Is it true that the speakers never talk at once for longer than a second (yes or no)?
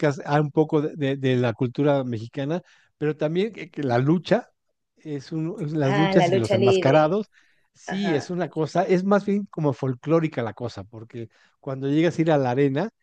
no